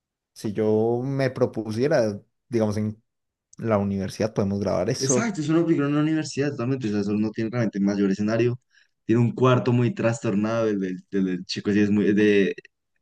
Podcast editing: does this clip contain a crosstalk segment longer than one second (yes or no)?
no